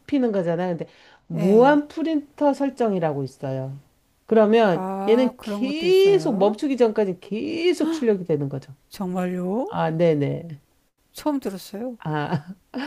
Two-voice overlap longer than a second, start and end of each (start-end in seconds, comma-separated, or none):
4.7-6.6